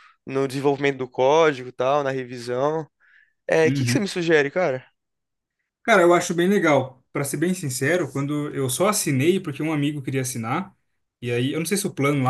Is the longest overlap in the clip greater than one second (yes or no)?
no